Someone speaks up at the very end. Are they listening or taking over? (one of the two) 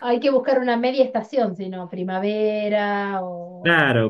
taking over